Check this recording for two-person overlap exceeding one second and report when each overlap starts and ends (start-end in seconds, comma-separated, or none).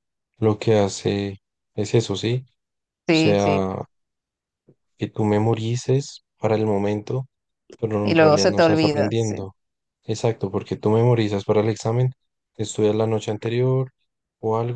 8.0-9.4